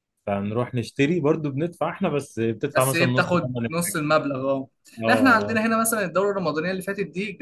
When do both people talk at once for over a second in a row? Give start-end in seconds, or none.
2.8-4.0